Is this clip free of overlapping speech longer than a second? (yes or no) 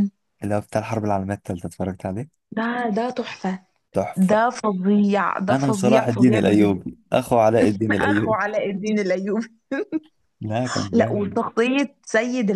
no